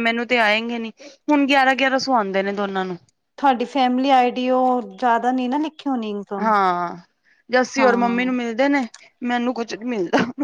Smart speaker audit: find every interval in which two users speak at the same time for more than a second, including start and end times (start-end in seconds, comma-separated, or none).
none